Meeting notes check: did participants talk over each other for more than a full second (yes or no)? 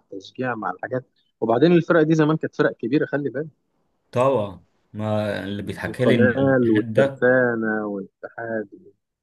yes